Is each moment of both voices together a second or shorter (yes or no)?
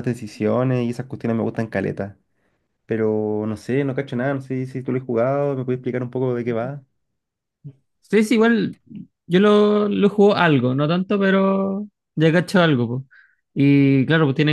yes